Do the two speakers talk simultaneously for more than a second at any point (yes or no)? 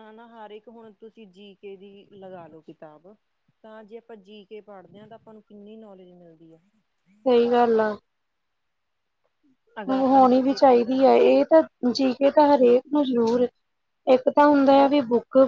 yes